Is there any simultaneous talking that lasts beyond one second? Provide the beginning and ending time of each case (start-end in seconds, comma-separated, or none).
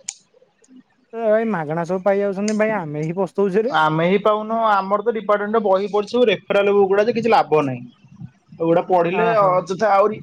none